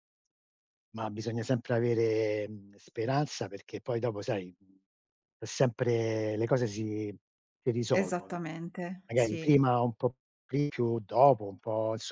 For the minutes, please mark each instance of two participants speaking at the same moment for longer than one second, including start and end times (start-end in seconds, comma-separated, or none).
none